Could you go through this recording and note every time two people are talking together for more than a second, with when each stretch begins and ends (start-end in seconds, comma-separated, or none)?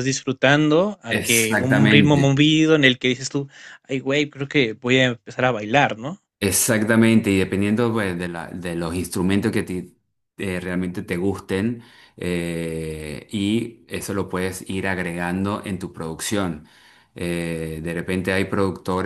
1.1-2.4